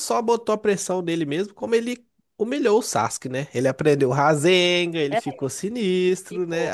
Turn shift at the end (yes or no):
no